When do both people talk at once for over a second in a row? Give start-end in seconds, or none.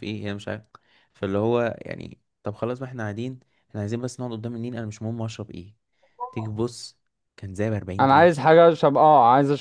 none